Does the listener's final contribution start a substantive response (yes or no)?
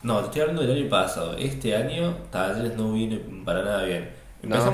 no